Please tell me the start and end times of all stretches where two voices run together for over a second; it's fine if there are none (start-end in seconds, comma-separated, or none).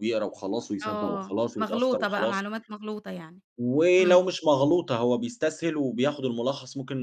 0.8-2.4